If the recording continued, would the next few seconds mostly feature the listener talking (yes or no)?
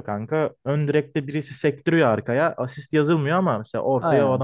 yes